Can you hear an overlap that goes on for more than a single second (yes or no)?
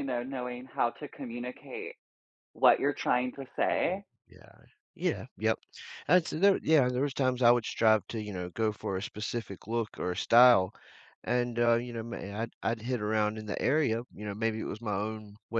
no